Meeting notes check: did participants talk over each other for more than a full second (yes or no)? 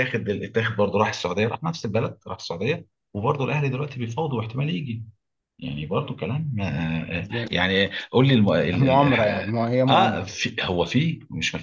yes